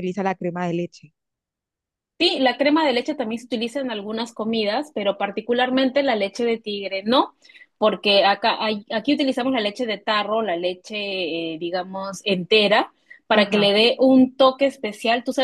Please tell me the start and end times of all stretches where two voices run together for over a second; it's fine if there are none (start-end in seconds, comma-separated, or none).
none